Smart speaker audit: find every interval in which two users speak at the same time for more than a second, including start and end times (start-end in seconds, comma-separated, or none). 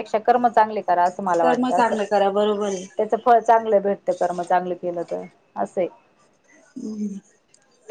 1.4-2.8